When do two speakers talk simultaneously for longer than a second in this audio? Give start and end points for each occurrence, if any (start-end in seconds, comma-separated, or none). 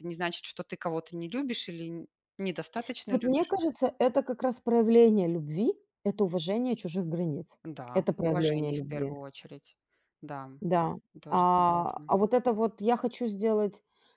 7.9-9.1